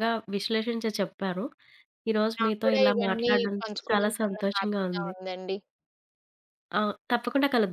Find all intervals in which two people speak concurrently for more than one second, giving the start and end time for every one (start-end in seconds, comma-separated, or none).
2.4-5.1